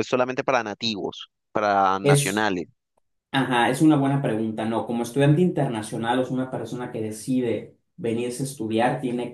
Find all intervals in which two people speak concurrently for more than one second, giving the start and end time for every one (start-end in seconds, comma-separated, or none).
none